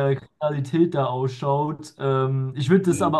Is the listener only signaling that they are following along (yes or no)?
yes